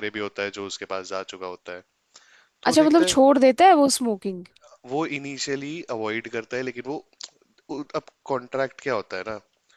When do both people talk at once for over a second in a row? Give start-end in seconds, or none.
none